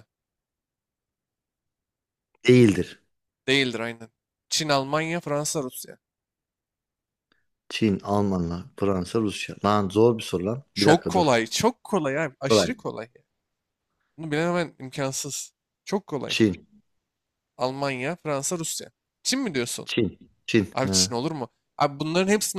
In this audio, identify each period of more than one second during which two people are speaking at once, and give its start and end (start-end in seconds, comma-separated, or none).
none